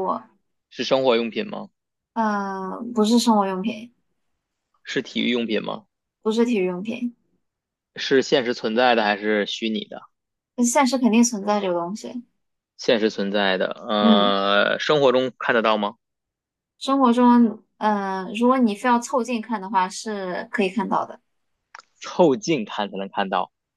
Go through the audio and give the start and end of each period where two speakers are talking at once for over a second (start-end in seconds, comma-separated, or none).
none